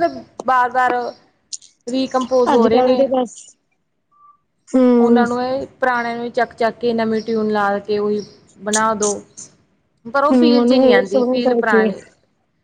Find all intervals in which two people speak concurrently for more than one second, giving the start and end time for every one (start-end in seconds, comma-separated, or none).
10.3-11.9